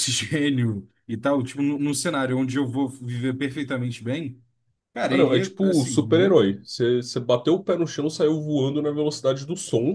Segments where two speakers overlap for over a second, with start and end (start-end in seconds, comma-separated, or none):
5.1-6.4